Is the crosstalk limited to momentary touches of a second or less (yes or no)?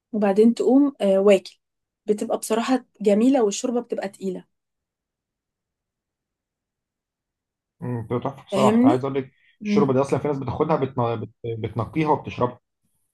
yes